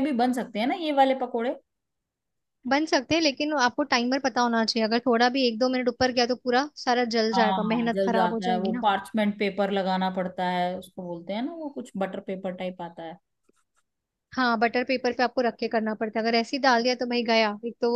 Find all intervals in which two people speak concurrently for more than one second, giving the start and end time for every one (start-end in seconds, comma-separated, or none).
7.3-8.8